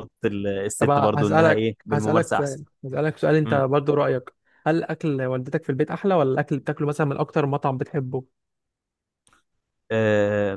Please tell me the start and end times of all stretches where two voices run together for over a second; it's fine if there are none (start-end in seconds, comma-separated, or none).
0.8-2.6